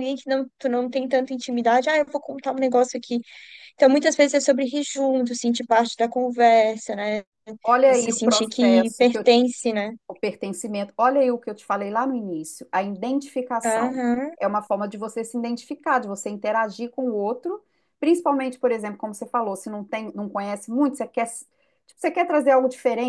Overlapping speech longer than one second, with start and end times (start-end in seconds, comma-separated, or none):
7.9-9.3